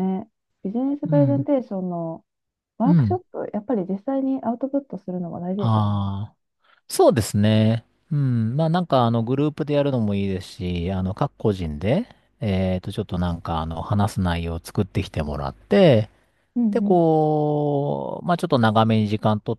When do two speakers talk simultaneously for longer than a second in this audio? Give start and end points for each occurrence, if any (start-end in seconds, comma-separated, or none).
none